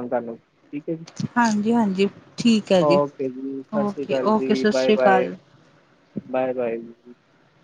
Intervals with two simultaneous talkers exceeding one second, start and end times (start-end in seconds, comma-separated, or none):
3.9-5.3